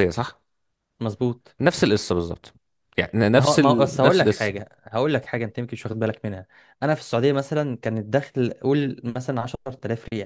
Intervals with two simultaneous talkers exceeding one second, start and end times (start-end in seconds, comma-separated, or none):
3.3-4.5